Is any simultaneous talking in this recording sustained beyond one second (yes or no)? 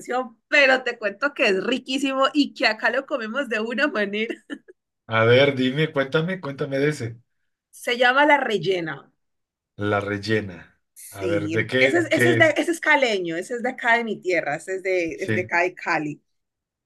yes